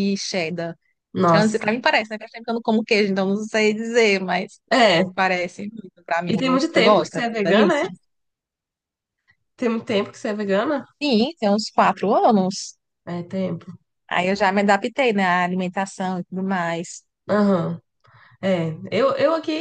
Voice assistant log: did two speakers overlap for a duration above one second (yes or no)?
yes